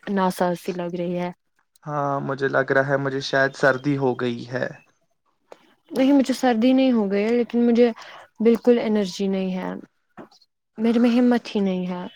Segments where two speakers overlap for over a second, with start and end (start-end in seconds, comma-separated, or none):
none